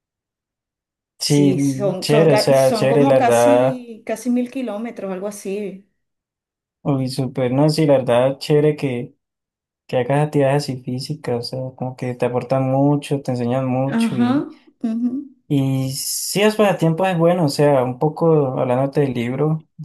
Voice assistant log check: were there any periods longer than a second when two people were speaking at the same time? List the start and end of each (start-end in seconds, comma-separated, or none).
1.2-3.9